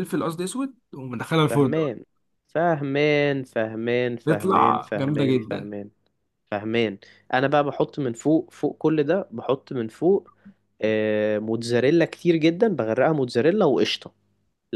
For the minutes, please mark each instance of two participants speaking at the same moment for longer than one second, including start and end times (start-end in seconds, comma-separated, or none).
4.2-5.7